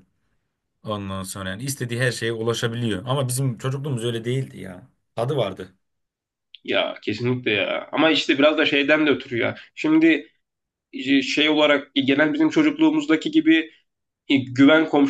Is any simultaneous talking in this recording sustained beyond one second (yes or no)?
no